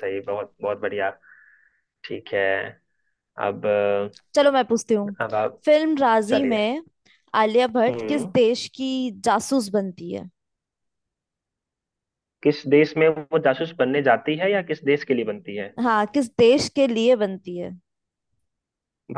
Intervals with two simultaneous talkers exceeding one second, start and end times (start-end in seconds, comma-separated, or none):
none